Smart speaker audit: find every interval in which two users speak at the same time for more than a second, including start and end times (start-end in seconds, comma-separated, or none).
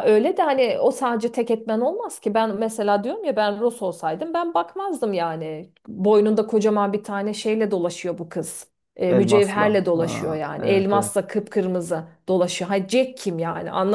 9.1-11.1